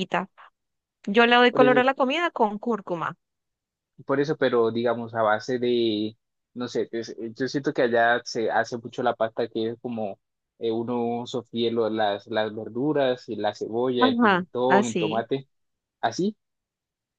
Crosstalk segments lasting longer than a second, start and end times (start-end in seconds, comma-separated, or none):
14.0-15.3